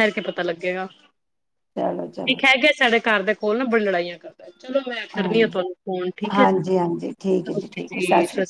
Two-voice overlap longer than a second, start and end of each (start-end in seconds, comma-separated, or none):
6.3-8.0